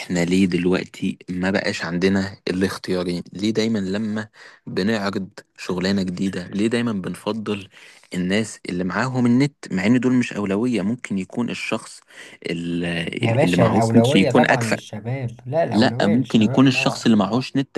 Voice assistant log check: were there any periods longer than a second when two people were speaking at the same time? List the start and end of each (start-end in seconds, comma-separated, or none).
13.2-14.8, 15.7-17.1